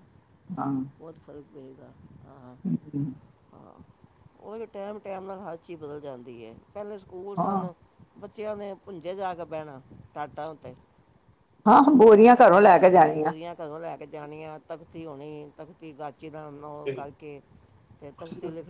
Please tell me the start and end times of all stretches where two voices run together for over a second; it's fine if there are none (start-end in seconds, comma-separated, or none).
none